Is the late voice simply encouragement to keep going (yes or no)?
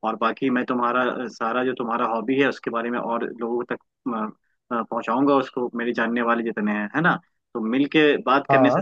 yes